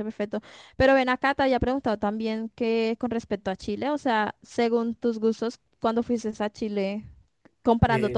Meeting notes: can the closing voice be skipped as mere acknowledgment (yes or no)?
yes